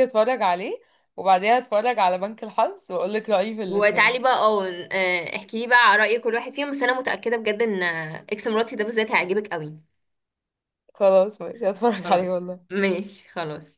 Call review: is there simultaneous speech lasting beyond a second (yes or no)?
no